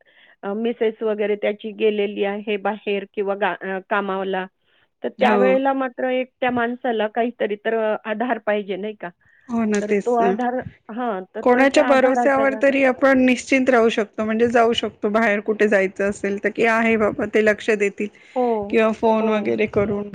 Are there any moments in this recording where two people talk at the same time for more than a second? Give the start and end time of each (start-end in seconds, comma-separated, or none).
11.4-12.7